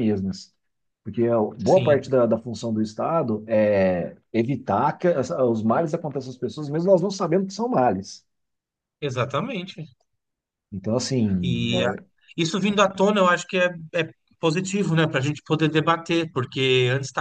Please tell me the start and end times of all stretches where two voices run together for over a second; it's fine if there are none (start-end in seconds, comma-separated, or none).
none